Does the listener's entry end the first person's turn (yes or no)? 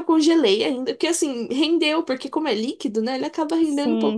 no